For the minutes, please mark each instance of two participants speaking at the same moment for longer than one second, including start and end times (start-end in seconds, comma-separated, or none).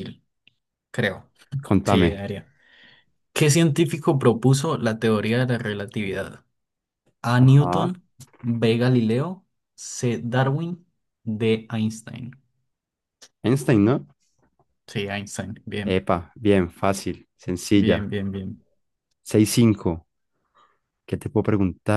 none